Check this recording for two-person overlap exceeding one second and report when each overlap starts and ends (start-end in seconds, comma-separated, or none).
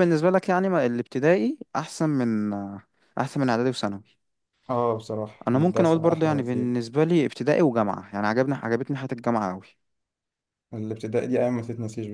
5.5-6.7